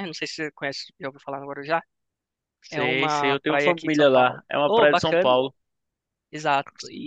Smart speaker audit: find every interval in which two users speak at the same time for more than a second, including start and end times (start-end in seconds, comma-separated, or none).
2.7-5.4